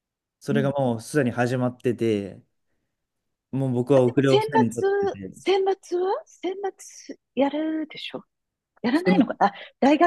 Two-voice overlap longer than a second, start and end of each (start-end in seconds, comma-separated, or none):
3.9-5.3